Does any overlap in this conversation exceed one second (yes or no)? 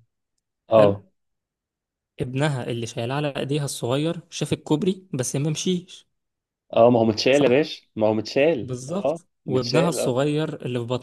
yes